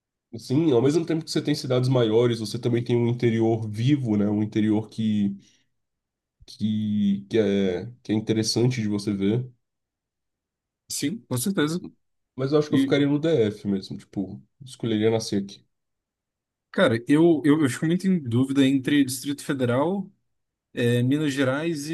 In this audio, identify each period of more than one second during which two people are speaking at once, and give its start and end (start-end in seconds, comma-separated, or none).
none